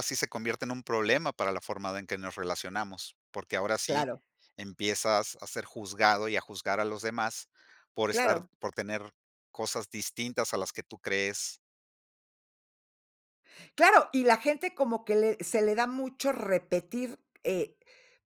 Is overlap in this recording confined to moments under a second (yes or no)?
yes